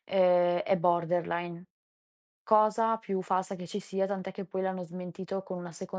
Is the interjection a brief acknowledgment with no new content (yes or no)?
yes